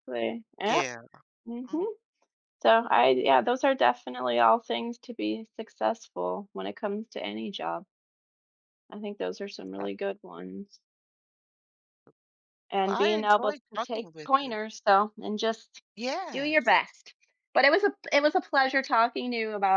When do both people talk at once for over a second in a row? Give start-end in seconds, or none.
12.8-14.6